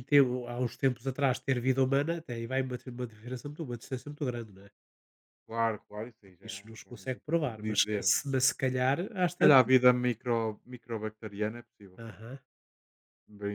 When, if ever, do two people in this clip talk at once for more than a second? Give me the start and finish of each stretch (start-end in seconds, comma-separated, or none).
6.2-8.2